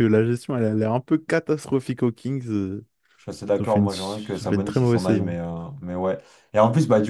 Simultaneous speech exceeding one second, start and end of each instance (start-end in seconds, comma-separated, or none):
3.6-5.4